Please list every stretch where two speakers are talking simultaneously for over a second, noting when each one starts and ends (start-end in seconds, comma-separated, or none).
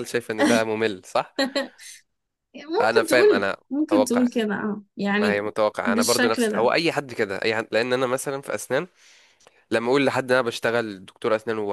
2.8-4.3, 5.2-6.7